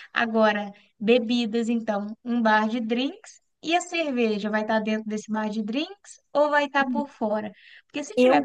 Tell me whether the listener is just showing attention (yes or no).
yes